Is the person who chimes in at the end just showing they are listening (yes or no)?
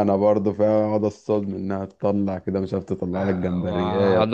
no